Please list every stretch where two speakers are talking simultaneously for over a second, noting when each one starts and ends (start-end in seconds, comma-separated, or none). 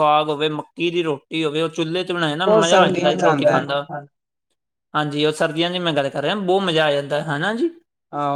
2.4-3.9